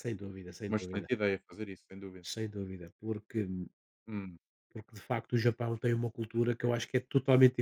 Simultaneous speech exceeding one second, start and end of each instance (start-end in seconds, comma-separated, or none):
none